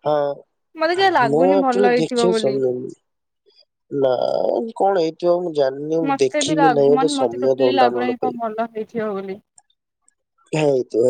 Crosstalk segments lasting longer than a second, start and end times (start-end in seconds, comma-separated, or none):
0.8-2.5, 6.1-8.4